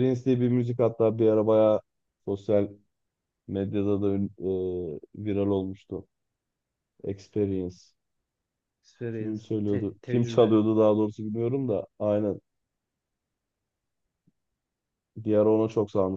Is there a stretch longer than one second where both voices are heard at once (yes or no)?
yes